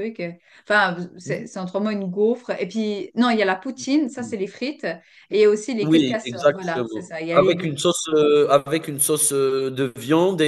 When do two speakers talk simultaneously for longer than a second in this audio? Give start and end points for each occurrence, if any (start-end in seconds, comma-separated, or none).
5.8-7.8